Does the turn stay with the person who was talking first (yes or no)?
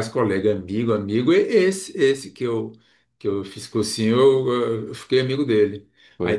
yes